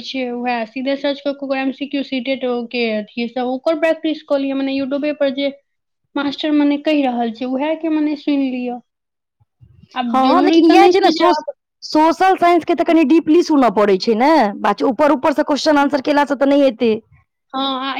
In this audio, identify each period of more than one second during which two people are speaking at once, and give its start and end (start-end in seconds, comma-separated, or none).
none